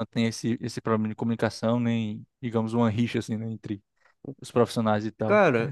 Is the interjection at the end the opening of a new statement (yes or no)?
yes